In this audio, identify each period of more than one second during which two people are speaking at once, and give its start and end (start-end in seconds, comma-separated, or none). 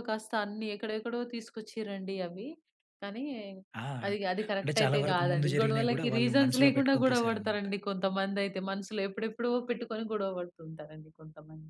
4.6-7.7